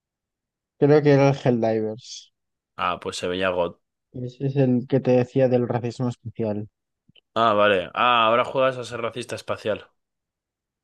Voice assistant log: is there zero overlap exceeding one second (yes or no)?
yes